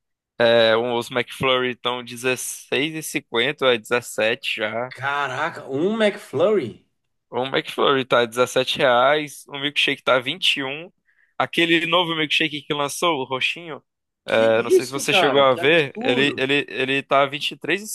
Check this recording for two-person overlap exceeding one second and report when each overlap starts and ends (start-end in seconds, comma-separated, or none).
14.4-16.5